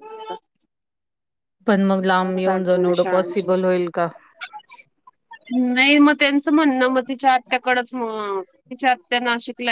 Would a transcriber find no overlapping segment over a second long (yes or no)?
yes